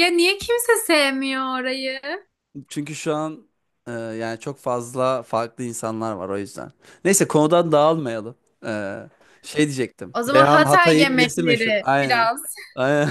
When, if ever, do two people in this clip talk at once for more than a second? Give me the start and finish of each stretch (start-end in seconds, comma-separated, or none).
10.1-12.3